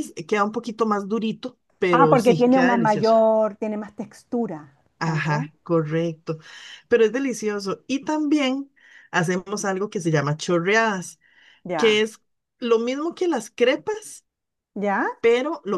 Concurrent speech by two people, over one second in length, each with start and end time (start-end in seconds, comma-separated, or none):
1.9-3.1